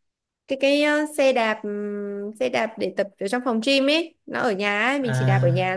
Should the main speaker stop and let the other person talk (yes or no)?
no